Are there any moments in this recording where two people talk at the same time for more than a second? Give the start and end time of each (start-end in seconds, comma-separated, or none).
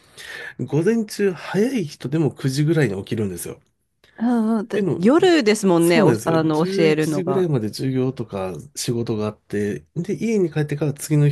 5.8-7.5